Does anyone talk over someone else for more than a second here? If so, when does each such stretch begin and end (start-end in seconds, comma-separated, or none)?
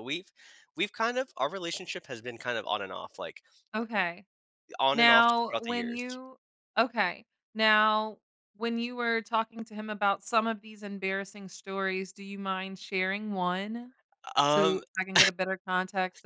4.9-6.2